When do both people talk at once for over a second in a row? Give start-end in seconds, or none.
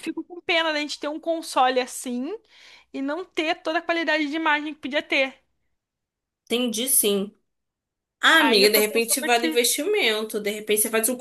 8.4-9.6